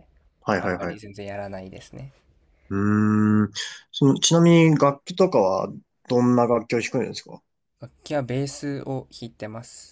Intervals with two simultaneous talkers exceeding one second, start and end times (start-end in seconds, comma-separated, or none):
none